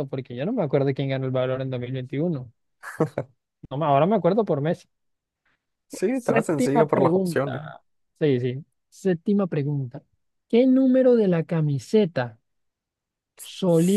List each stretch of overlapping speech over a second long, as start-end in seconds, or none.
6.1-7.6